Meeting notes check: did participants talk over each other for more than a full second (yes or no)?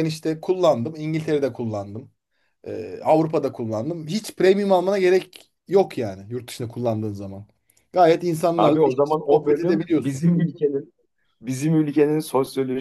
yes